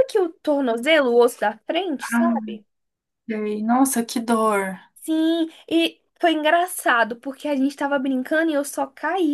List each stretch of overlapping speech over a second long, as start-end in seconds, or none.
none